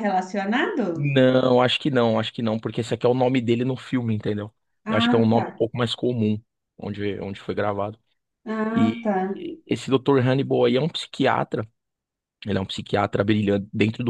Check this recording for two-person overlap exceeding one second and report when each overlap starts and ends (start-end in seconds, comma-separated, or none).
none